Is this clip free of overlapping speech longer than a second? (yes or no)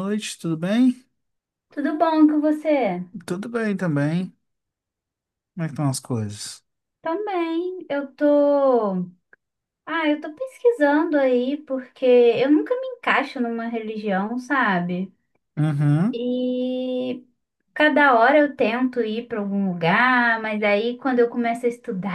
yes